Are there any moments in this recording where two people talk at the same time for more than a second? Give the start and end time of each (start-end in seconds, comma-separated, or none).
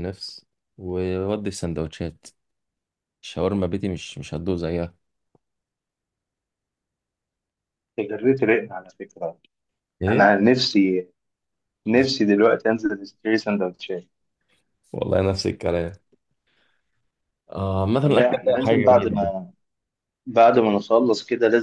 18.1-19.3